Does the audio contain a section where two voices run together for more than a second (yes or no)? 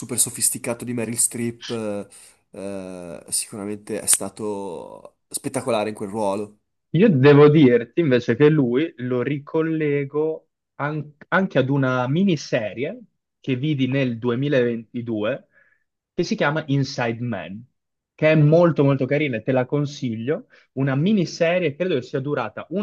no